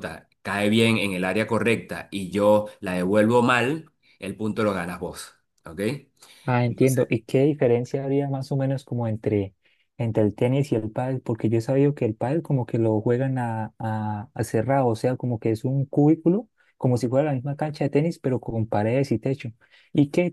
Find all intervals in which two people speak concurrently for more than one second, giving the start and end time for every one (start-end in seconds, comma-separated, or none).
none